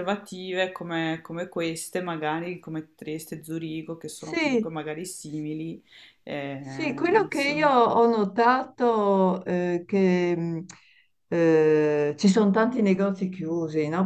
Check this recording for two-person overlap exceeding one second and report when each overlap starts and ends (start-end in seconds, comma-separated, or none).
none